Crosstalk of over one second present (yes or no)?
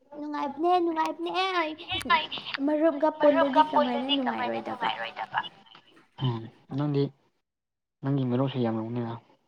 yes